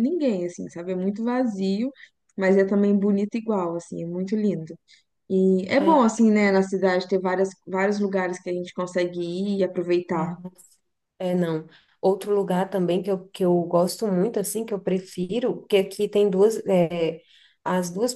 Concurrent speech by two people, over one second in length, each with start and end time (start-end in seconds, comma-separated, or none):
none